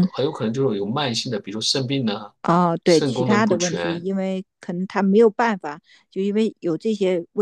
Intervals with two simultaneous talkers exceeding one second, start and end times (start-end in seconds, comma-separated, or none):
2.8-4.1